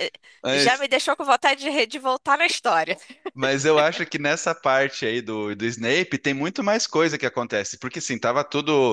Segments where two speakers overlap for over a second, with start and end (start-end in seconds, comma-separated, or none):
none